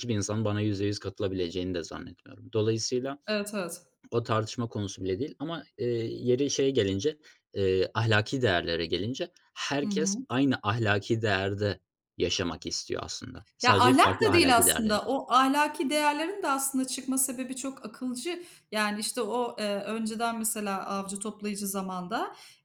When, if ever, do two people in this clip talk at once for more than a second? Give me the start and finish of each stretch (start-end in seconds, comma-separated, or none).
13.6-15.1